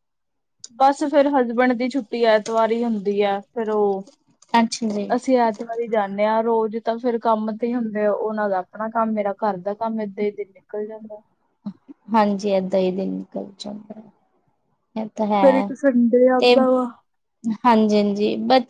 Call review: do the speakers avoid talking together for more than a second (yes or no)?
yes